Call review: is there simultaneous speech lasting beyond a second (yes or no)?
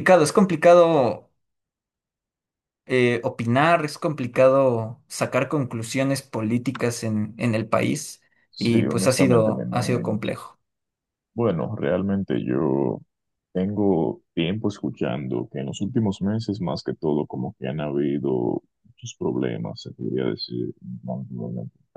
yes